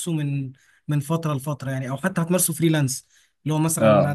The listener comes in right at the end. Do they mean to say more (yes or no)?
no